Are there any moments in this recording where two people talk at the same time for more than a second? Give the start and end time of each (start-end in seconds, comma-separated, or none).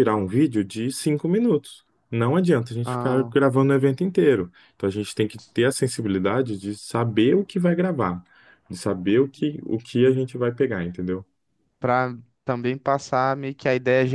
none